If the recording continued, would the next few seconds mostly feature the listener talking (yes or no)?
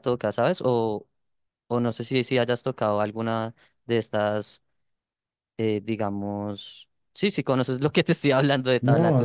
yes